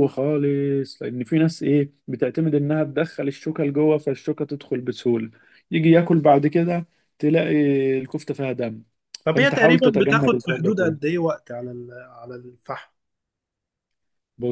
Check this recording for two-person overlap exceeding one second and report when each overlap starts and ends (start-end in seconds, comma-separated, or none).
9.3-11.0